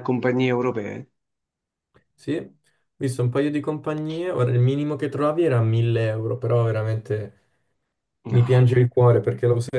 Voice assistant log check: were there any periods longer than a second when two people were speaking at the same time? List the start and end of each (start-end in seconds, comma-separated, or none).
none